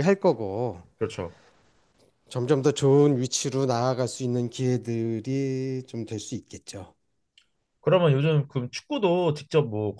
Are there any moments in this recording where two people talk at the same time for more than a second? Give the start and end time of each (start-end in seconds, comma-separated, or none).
none